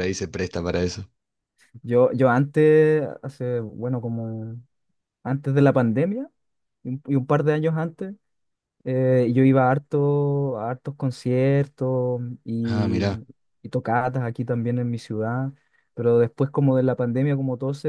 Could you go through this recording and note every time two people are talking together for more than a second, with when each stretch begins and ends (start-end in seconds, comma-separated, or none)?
none